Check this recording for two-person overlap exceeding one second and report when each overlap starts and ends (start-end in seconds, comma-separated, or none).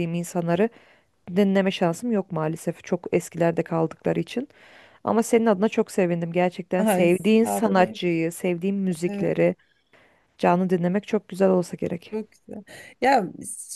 6.8-8.0